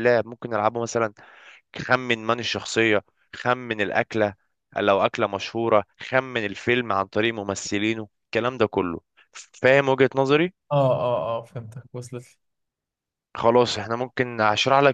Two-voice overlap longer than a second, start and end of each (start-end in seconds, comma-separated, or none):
none